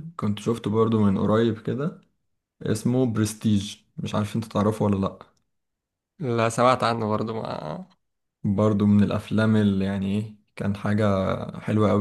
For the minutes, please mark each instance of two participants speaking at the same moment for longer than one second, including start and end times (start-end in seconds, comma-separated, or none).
none